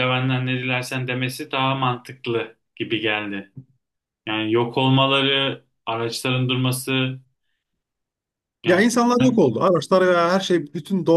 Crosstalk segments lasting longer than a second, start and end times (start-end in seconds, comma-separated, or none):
none